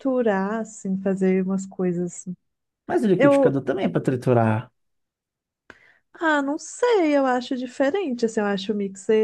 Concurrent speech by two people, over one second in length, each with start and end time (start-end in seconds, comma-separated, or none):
none